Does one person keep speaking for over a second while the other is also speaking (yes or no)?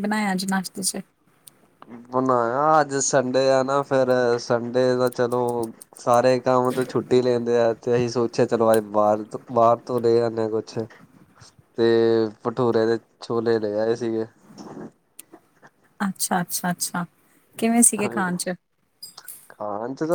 no